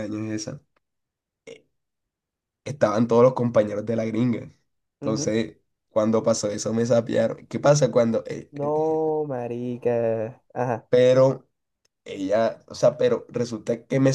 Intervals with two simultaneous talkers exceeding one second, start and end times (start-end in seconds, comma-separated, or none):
none